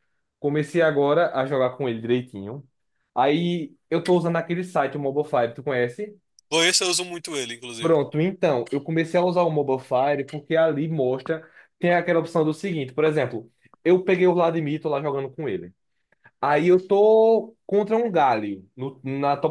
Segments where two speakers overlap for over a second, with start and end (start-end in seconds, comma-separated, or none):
none